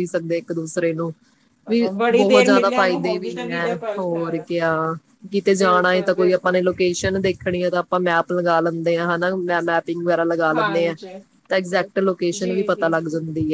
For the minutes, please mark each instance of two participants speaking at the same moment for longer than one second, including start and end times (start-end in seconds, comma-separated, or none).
2.0-4.5, 5.6-6.8